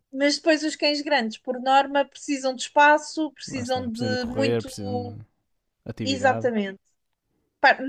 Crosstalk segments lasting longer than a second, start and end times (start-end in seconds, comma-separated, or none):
3.5-4.7